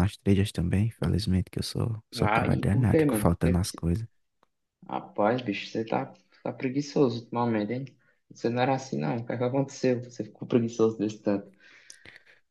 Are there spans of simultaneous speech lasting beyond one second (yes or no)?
yes